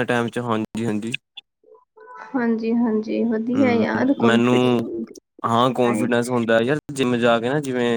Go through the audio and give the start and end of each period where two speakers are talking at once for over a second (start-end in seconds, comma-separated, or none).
3.6-4.9